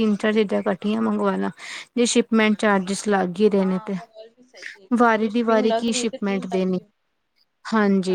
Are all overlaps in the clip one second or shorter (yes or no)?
no